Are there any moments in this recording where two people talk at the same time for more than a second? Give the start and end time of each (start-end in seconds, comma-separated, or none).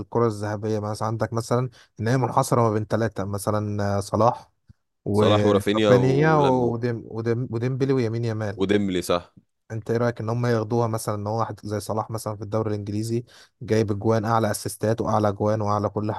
5.1-6.7